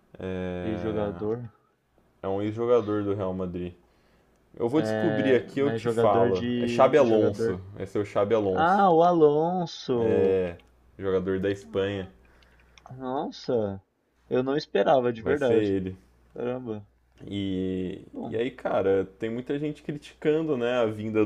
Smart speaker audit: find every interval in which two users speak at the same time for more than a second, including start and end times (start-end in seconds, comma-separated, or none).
4.7-7.6